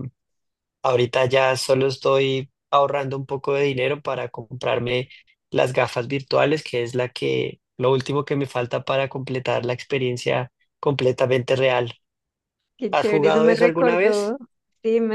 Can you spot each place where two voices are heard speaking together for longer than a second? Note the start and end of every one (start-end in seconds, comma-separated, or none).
12.9-14.3